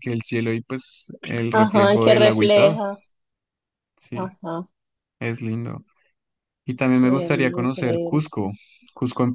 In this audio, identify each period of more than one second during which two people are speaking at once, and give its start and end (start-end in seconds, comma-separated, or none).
1.5-2.8, 7.0-8.2